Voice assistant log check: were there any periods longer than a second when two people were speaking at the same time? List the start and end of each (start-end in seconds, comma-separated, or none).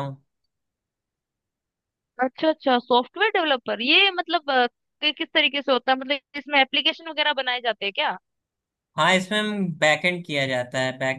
none